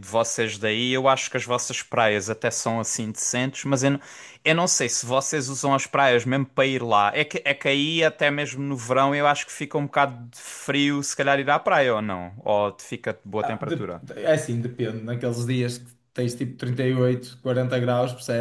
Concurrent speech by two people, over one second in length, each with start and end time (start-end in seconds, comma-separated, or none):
none